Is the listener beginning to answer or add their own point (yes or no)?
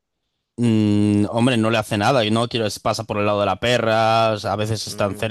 yes